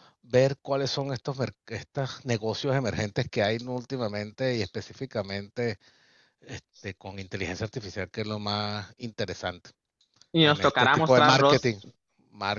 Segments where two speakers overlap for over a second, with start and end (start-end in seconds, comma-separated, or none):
10.4-11.8